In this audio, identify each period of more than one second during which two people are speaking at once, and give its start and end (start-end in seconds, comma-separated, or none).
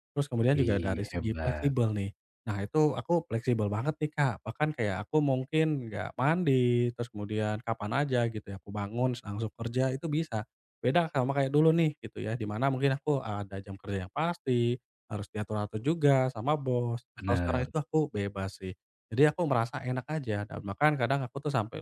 0.5-1.7